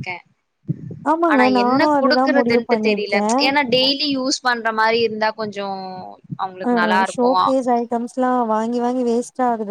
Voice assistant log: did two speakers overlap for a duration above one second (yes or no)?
yes